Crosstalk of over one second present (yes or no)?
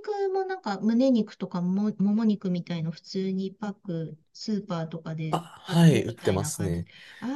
yes